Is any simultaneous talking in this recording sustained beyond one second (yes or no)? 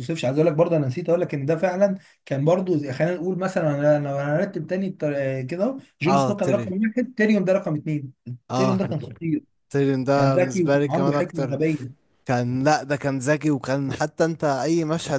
yes